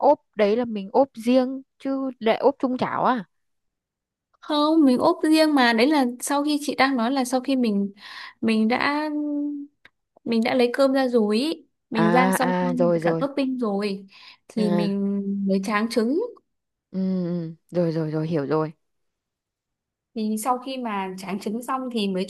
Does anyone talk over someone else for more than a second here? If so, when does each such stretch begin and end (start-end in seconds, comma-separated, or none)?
11.9-13.3